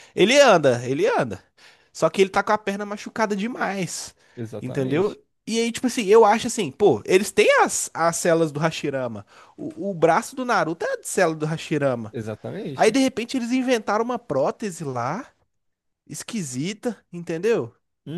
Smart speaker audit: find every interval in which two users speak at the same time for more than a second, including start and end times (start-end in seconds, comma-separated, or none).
none